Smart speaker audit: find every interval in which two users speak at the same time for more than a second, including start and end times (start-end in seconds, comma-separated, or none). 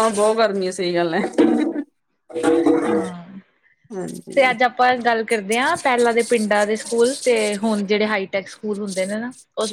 none